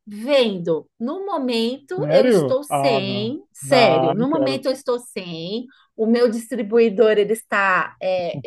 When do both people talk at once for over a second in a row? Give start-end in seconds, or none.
2.0-4.6